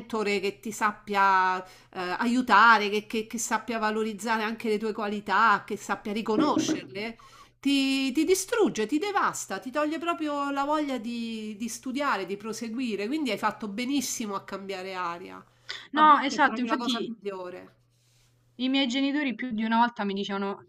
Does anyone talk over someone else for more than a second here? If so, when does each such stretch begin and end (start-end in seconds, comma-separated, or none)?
15.9-17.1